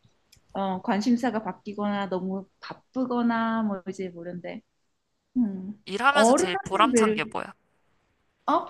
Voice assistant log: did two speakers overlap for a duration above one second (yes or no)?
yes